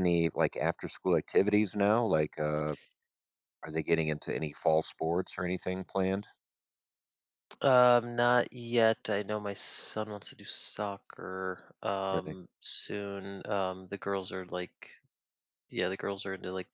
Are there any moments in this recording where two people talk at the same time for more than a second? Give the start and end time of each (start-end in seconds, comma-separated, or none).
none